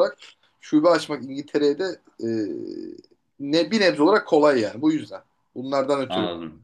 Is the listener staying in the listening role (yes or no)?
no